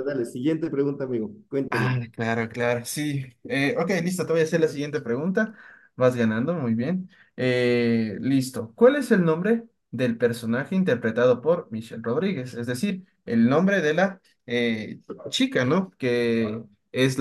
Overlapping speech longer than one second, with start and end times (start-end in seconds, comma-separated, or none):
none